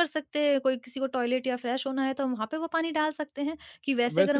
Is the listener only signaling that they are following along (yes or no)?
no